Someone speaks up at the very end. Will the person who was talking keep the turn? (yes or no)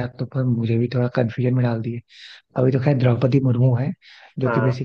yes